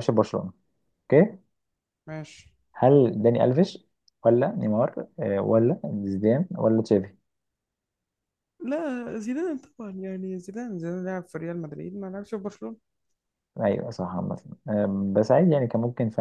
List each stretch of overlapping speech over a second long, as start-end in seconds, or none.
none